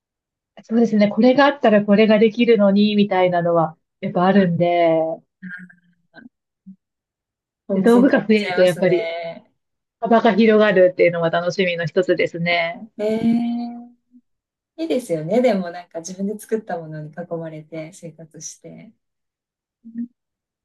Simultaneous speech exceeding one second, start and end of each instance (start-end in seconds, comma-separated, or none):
7.7-9.1